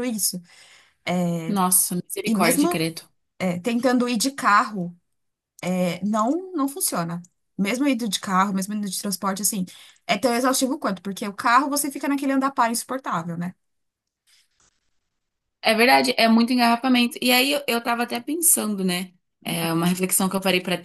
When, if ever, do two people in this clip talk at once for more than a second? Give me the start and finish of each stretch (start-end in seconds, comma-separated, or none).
none